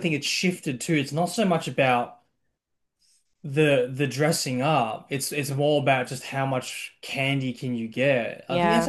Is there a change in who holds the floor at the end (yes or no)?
no